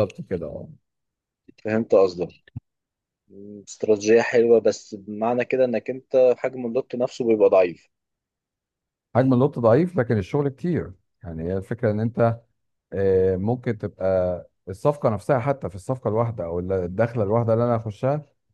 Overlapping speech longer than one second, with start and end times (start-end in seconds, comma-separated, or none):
none